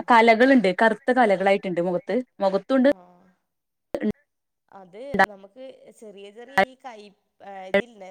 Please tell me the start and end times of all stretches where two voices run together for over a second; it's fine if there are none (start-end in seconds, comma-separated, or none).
none